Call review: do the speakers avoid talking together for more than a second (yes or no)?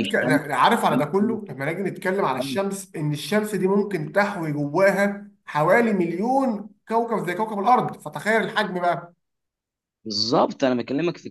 yes